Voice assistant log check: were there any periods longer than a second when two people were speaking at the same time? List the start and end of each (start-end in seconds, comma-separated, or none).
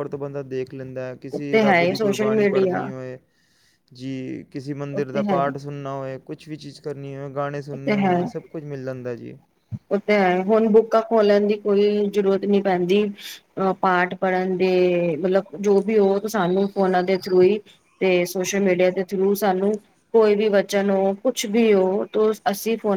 1.3-2.9